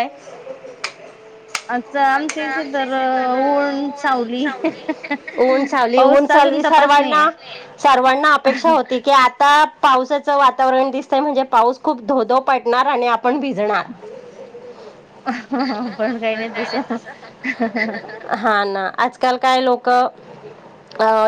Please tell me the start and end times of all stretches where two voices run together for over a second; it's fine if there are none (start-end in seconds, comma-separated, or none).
6.0-7.3